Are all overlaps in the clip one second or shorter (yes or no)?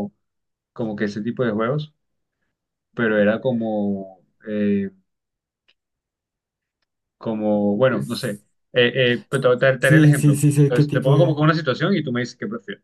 no